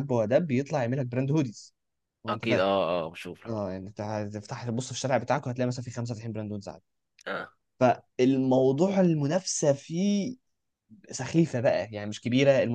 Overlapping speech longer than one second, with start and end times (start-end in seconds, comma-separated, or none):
none